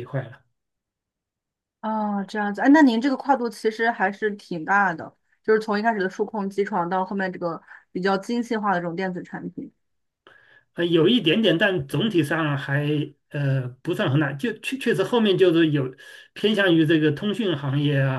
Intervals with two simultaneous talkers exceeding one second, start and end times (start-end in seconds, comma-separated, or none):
none